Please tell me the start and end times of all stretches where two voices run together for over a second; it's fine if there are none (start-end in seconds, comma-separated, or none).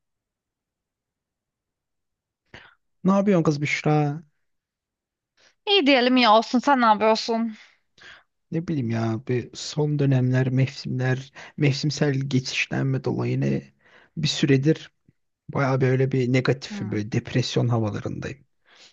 none